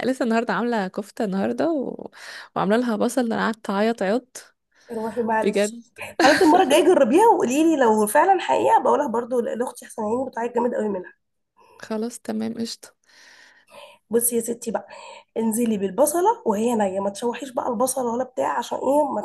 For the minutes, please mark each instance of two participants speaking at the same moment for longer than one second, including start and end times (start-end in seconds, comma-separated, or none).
none